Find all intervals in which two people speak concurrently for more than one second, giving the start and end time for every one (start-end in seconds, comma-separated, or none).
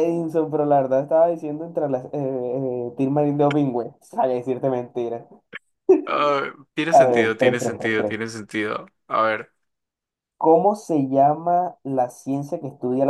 6.9-8.1